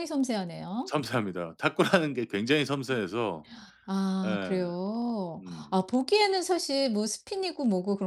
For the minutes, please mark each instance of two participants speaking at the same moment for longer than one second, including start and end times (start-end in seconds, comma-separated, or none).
none